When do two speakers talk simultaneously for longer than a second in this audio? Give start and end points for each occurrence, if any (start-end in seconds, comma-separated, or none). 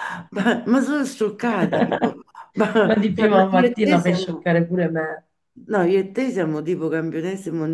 2.8-4.5